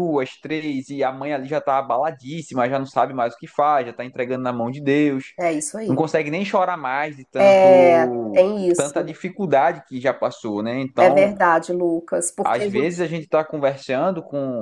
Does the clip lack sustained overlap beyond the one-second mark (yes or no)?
no